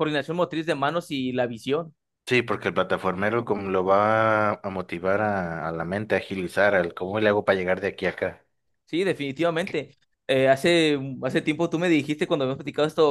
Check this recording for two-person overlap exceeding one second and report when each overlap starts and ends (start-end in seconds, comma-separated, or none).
none